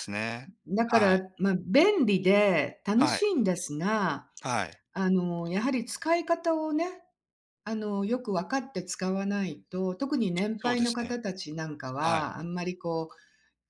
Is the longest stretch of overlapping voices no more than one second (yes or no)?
yes